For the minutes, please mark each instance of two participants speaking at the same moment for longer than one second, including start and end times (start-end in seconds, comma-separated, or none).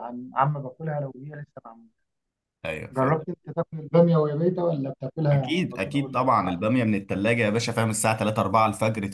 5.3-6.6